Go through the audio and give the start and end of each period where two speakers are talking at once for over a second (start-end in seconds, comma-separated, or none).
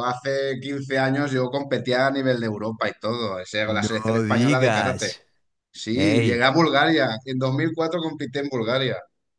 3.6-5.1